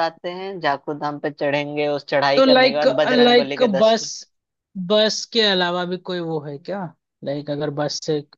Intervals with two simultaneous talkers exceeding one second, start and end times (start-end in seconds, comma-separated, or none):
2.4-4.0